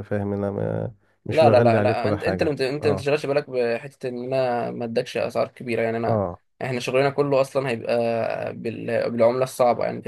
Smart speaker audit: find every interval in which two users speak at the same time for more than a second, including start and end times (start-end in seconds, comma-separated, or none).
1.3-3.1